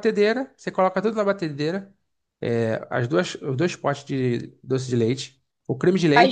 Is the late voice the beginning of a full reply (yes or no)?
yes